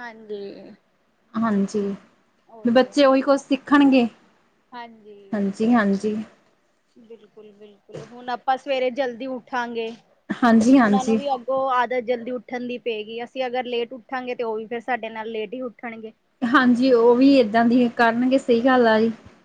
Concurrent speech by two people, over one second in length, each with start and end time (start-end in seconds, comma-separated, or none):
none